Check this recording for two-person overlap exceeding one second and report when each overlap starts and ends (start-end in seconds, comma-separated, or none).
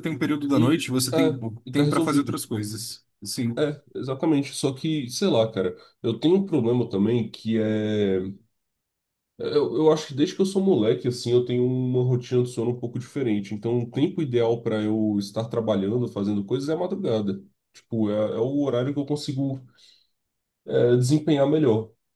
0.5-2.4